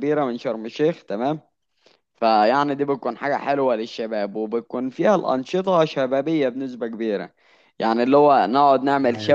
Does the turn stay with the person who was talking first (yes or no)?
yes